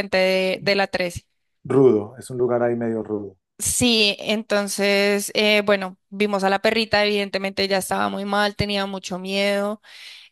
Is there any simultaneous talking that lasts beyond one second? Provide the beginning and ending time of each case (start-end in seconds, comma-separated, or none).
none